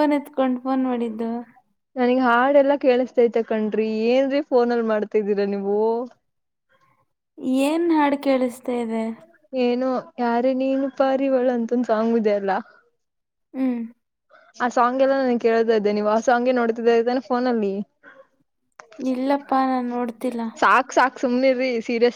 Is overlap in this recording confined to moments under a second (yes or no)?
yes